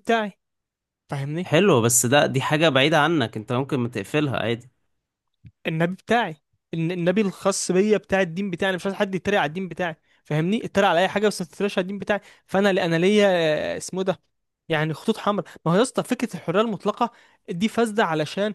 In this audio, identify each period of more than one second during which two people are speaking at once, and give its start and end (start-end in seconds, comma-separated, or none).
none